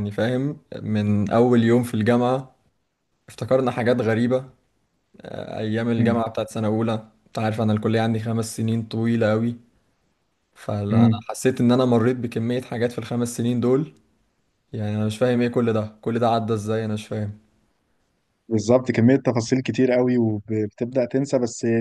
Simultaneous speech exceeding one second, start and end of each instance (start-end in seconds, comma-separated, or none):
none